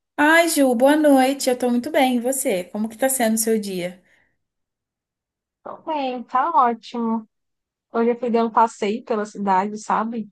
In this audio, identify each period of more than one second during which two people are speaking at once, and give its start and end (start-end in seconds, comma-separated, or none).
none